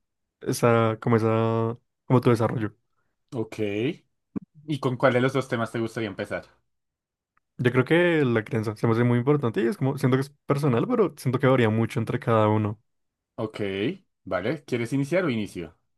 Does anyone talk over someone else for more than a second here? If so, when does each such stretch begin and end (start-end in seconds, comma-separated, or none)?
none